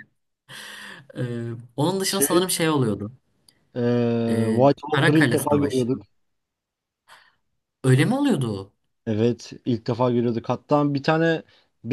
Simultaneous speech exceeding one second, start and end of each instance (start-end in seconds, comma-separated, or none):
4.3-5.9